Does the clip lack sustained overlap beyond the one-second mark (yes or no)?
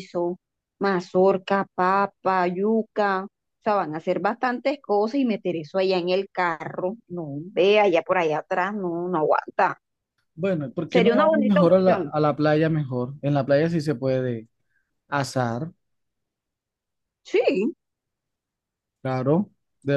no